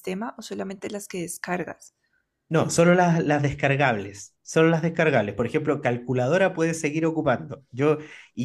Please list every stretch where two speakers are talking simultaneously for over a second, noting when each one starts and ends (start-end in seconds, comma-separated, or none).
none